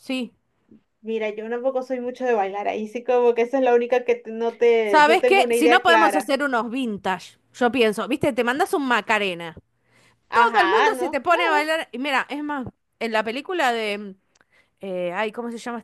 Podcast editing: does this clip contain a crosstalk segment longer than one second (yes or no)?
yes